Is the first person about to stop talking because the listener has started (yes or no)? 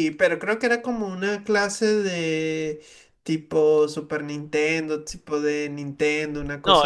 yes